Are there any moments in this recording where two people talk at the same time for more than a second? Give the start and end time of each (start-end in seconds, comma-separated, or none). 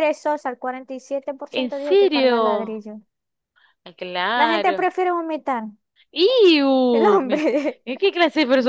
1.5-2.8